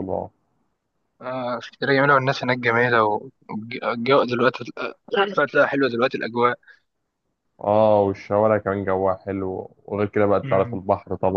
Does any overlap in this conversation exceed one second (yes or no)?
no